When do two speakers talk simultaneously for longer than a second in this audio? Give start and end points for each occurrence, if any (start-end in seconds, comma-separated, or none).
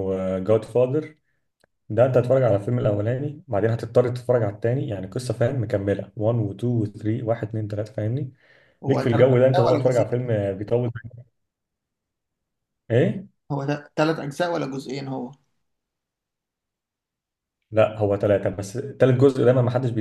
8.9-10.3